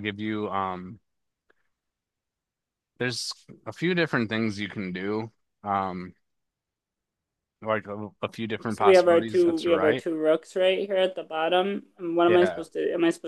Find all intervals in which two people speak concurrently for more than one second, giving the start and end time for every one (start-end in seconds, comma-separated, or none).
8.7-10.0